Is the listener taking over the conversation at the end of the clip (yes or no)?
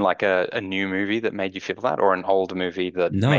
yes